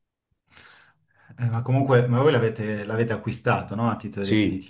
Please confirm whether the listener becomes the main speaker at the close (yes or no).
yes